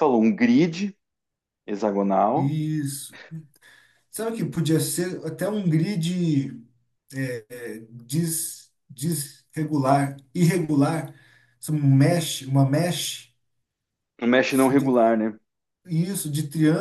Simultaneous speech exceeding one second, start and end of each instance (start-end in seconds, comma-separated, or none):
none